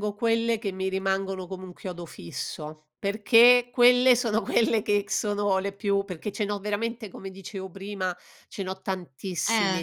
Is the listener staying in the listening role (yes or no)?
yes